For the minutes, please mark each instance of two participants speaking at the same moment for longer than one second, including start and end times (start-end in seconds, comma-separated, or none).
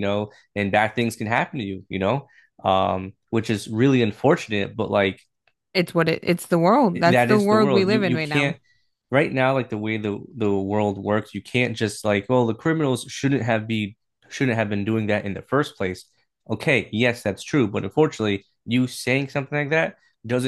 7.1-8.6